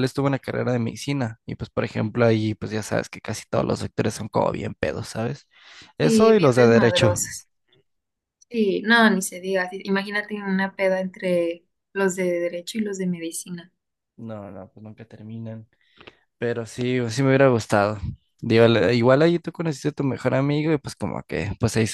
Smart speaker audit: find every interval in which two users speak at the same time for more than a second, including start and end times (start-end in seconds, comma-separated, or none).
6.0-7.2